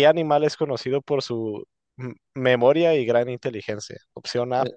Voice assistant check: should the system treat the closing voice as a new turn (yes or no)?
no